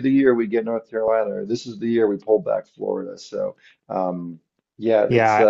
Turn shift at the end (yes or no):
yes